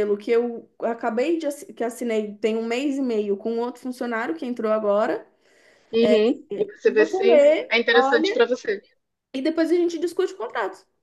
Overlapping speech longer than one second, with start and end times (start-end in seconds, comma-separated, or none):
6.9-8.5